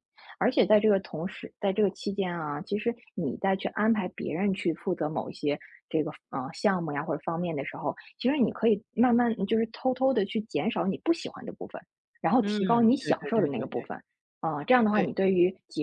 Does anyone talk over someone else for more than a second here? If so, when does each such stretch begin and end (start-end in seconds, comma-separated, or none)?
12.4-13.9